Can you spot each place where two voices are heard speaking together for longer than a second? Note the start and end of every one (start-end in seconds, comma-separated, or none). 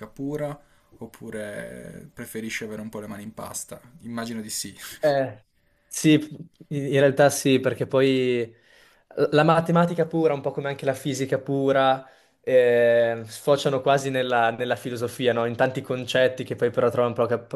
none